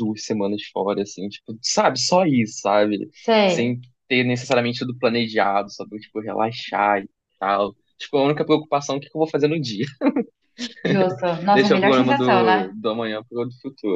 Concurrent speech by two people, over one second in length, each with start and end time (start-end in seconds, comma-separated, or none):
11.5-12.7